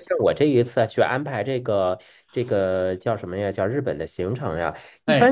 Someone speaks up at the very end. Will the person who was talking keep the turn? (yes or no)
yes